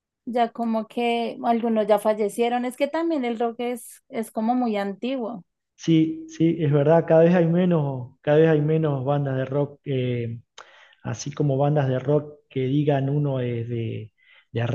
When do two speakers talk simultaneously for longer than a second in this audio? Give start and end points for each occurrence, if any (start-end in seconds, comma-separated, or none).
none